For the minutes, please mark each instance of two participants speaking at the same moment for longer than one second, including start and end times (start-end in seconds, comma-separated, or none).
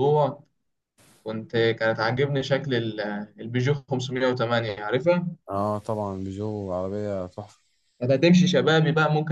none